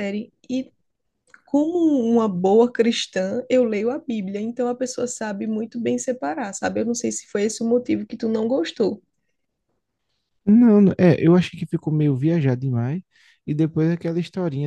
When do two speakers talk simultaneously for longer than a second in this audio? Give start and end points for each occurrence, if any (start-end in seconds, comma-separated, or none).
none